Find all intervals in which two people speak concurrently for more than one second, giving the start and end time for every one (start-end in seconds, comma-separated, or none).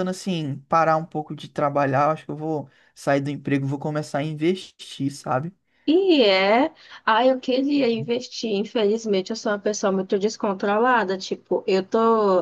none